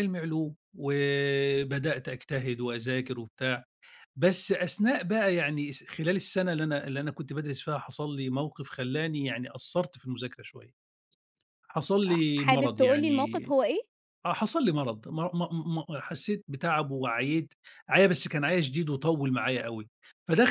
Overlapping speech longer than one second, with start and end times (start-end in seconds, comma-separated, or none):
12.1-13.5